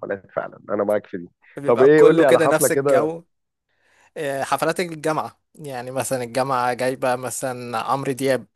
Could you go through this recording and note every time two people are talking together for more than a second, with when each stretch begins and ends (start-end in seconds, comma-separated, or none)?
1.7-3.1